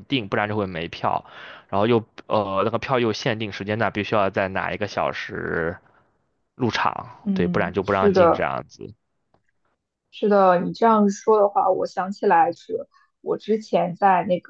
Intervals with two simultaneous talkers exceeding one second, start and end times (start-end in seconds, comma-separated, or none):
7.2-8.4